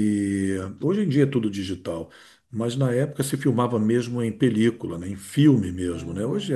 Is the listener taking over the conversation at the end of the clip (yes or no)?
no